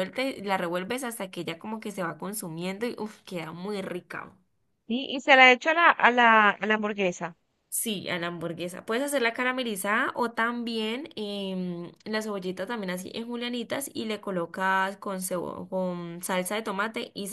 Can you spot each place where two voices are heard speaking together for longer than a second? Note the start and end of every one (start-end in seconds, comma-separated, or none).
none